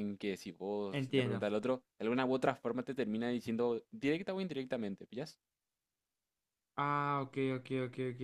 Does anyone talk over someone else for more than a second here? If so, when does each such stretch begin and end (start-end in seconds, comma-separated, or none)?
none